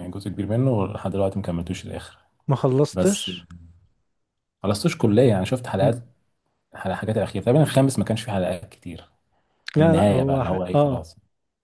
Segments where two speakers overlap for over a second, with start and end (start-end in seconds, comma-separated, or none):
9.8-11.1